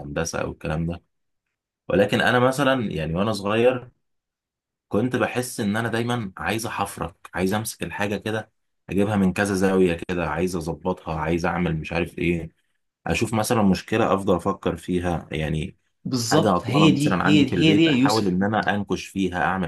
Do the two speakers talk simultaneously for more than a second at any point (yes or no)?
yes